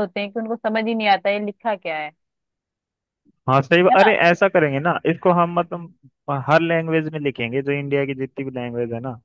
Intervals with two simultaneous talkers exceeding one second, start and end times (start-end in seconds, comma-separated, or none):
none